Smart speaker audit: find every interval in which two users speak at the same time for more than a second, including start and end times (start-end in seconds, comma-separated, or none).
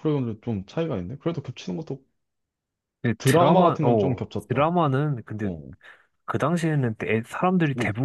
3.2-4.7